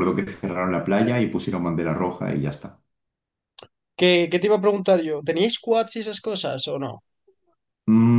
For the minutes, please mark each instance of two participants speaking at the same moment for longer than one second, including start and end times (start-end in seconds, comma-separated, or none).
none